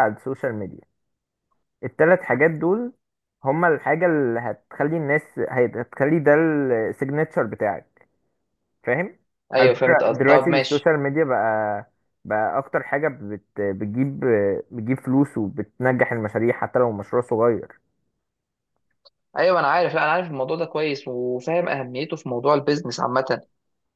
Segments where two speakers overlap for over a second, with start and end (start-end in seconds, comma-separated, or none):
9.6-10.9